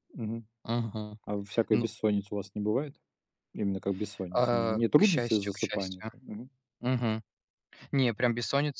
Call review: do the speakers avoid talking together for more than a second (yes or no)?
no